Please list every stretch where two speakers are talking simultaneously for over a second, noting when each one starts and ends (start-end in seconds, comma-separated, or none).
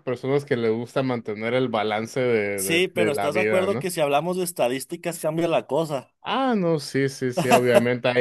2.5-3.9